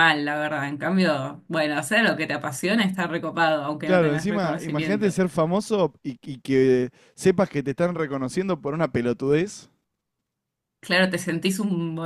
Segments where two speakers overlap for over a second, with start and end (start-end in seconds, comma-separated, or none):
3.9-5.2